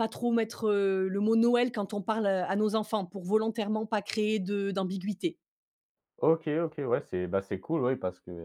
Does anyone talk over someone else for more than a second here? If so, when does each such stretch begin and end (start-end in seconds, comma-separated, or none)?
none